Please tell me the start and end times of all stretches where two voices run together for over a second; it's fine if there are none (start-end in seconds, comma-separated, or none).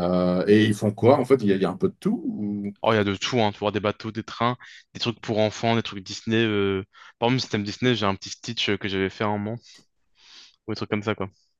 none